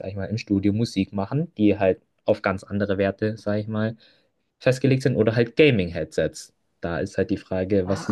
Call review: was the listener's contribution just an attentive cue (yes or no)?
no